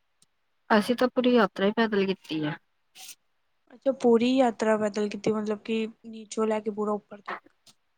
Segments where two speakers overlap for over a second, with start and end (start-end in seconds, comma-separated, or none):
none